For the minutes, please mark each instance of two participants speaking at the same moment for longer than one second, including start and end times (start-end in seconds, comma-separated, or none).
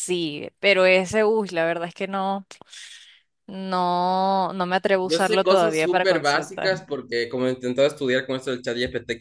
5.0-6.8